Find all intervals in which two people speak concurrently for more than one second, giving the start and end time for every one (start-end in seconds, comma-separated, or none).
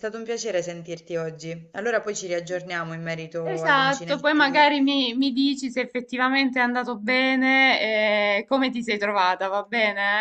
3.4-4.7